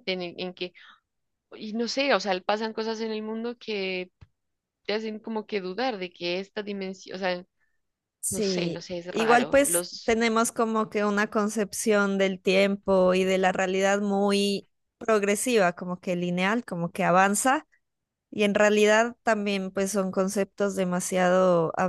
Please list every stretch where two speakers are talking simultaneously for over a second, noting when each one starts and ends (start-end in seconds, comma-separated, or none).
8.3-10.1